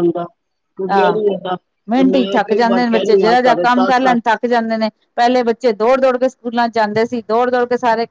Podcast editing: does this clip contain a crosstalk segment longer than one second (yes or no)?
yes